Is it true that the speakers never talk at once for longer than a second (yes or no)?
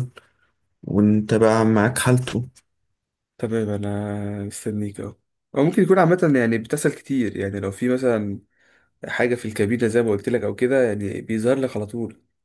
yes